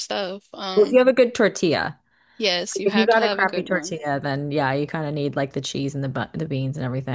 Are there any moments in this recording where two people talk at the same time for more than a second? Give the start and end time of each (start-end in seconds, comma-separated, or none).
2.8-4.0